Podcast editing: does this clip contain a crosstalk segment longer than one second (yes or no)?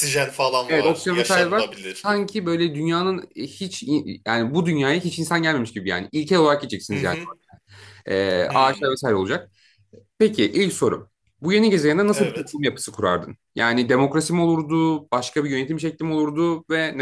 yes